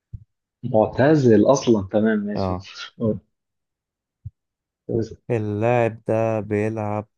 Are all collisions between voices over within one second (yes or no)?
yes